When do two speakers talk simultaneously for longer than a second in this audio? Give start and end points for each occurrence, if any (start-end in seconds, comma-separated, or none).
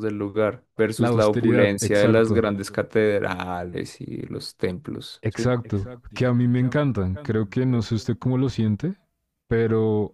0.9-2.4